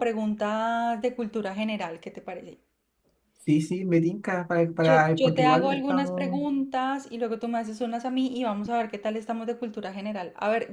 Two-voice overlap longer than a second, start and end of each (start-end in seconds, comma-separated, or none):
4.8-6.4